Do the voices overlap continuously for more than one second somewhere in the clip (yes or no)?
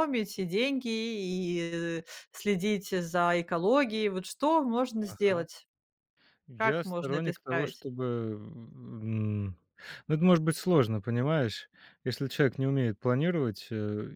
yes